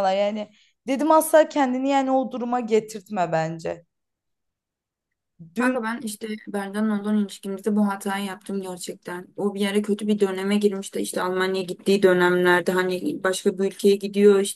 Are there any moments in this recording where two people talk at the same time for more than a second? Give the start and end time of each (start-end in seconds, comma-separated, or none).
none